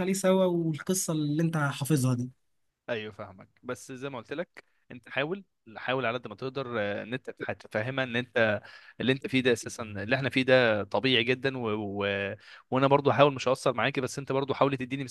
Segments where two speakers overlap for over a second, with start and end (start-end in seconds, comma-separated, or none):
none